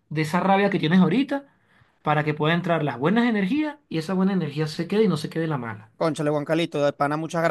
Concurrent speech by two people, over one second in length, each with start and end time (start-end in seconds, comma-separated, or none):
none